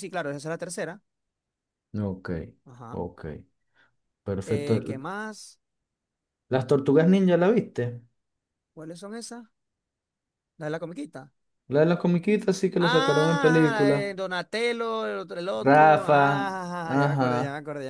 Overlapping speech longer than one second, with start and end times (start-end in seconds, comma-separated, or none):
12.8-14.1